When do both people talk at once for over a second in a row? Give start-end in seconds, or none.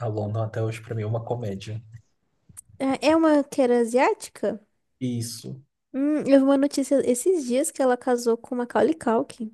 none